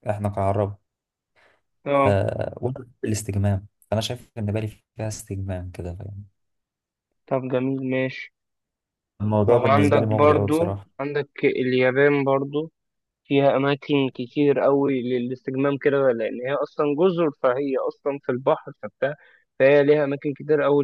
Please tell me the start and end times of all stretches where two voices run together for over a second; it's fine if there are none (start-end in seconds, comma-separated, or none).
9.5-10.9